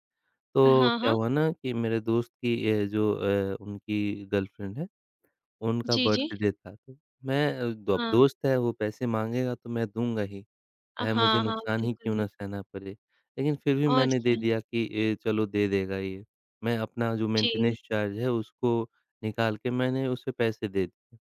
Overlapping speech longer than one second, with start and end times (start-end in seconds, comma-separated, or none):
11.0-12.3